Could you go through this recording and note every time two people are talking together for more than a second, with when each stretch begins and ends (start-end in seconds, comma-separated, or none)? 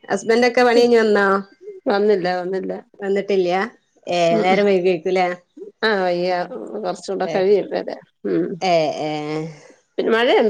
none